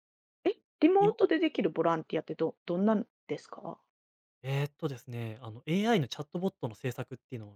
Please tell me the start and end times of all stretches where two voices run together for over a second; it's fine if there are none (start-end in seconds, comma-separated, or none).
none